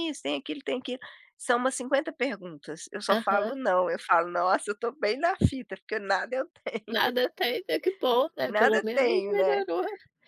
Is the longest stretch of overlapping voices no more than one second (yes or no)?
no